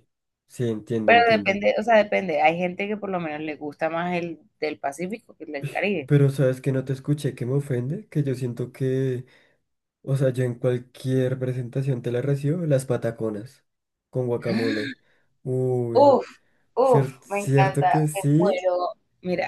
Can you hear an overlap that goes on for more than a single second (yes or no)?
yes